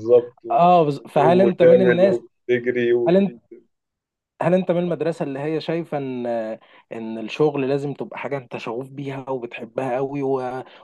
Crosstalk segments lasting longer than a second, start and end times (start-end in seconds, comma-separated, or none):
0.5-2.0